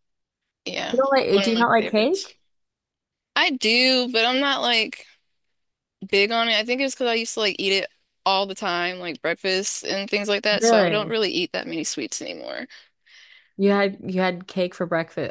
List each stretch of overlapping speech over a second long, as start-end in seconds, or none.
0.9-2.4